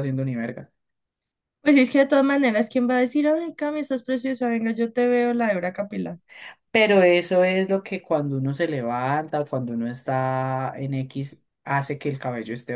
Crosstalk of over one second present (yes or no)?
no